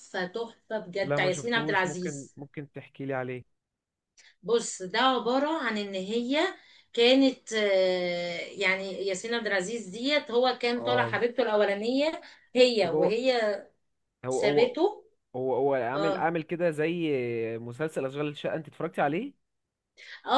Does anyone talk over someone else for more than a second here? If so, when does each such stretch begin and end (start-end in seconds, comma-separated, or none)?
1.0-2.4